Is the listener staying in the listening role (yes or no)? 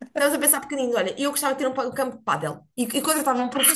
no